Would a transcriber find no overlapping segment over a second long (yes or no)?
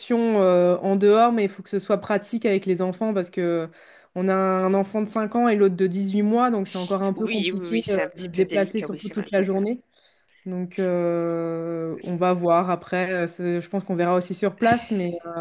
no